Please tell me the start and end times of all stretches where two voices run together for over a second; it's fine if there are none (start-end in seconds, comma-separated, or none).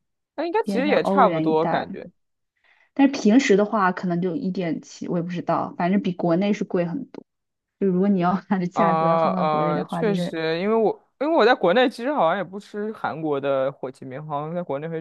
0.6-1.9, 8.7-10.4